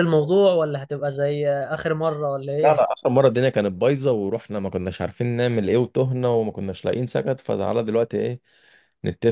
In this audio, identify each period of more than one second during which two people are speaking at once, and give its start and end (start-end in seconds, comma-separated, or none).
none